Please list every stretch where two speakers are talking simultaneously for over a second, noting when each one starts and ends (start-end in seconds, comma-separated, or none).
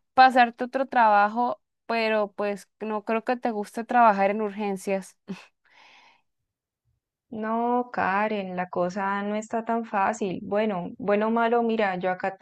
none